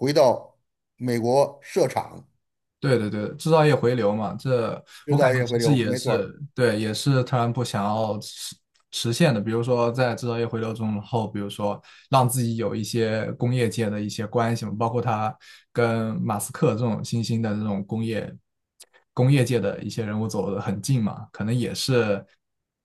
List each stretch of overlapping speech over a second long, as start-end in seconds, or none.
5.1-6.3